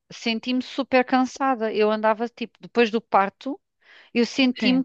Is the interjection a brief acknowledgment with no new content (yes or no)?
yes